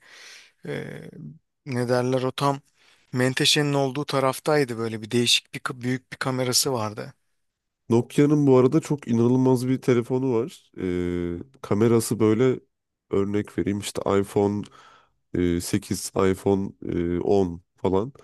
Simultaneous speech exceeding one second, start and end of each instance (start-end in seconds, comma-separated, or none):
none